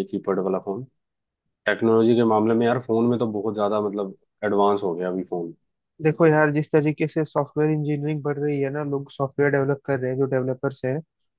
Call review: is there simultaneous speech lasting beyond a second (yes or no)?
no